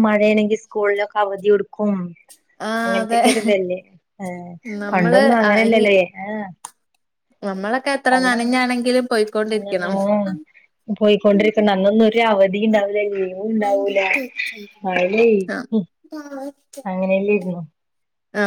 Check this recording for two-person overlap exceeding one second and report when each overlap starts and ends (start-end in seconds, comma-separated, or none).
none